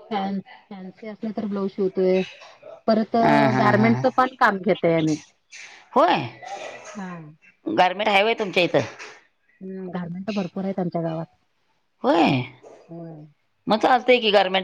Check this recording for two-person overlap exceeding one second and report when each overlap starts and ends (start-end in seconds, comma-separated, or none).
none